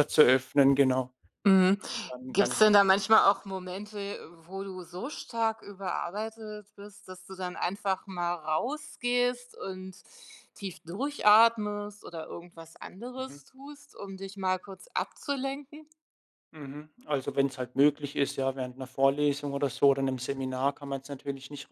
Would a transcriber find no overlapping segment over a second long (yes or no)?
yes